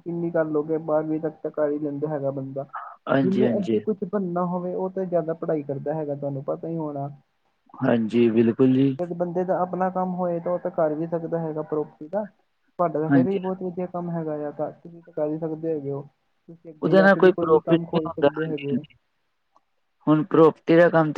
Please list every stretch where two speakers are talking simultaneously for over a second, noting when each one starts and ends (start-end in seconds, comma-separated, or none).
16.8-18.8